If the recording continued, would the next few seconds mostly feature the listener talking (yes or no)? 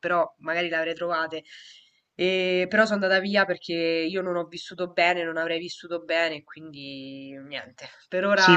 yes